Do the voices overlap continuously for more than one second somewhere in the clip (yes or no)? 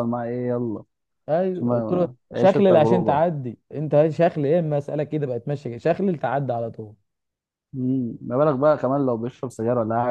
yes